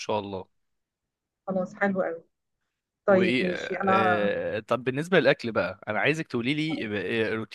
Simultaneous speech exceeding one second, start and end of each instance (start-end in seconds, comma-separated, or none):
3.1-4.3